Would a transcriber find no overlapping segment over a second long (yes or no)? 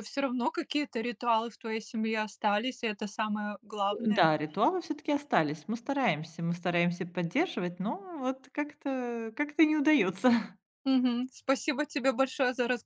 yes